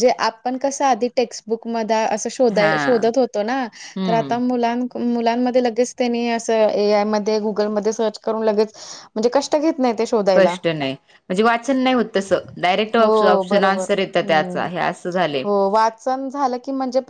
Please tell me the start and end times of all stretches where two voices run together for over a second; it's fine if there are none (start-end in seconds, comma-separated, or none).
13.0-14.7